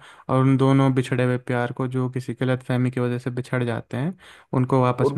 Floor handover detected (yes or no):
no